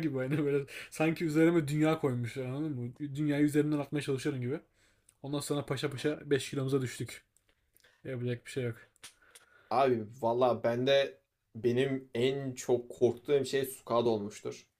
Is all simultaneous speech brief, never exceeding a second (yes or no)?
yes